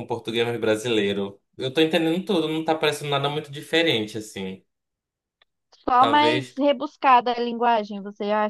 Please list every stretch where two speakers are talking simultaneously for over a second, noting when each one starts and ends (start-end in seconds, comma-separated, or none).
none